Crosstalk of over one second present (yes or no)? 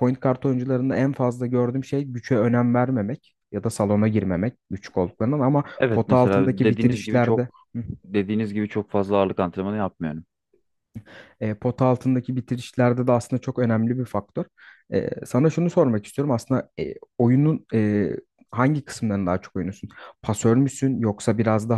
yes